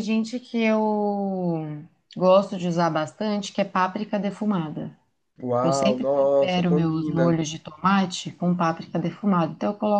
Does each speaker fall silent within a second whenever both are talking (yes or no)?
no